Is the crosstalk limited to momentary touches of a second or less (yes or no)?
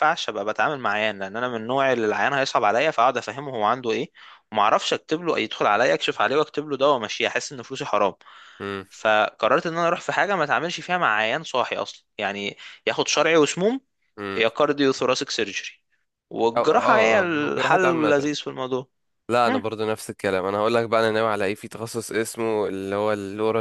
no